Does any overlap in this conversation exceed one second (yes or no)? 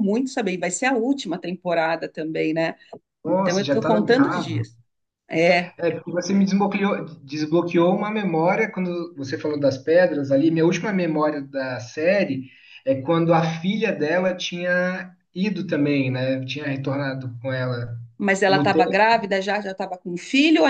yes